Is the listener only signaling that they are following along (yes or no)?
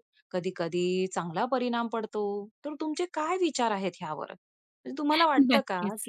yes